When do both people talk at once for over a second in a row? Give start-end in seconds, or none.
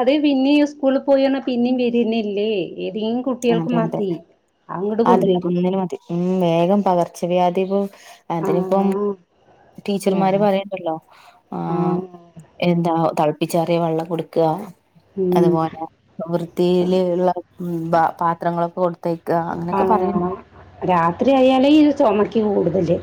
none